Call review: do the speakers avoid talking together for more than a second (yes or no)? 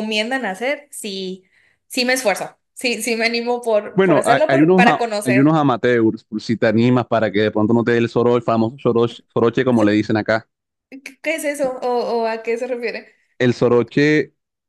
no